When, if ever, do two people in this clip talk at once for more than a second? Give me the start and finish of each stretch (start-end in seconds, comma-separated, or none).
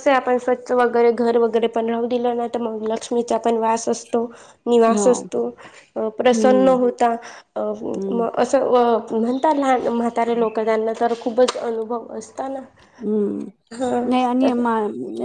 none